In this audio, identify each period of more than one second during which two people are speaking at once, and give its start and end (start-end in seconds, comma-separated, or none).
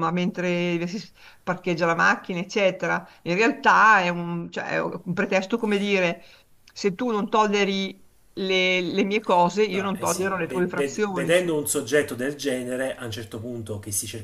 9.7-11.6